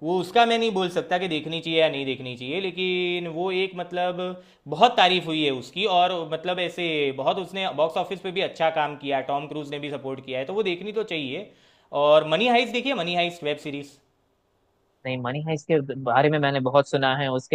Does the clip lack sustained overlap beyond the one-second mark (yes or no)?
yes